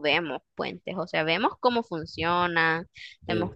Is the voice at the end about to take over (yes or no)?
no